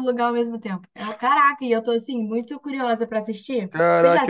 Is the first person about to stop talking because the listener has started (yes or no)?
yes